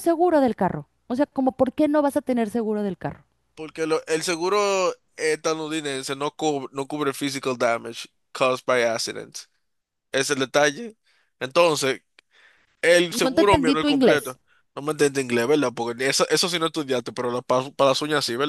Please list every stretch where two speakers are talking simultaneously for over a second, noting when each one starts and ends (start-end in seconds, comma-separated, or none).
13.1-14.4